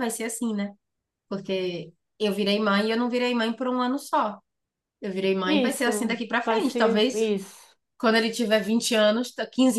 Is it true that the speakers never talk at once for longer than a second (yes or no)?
no